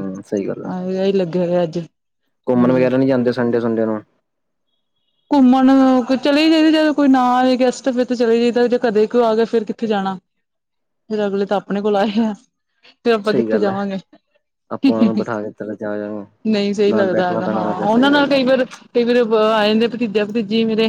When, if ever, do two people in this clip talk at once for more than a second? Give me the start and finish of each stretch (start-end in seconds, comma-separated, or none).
16.9-18.4